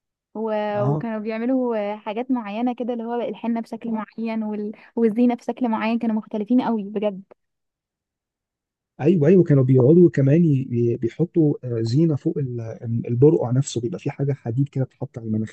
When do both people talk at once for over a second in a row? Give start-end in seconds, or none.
none